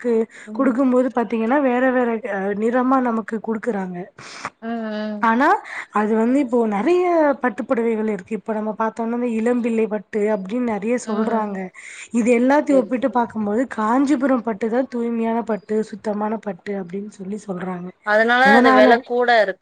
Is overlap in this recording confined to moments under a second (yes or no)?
yes